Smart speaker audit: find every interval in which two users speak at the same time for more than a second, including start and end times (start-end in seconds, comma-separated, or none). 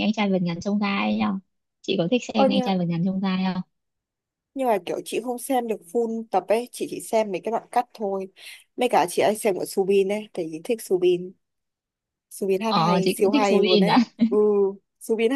12.7-14.0